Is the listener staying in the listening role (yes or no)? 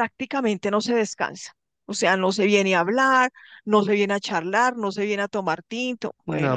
no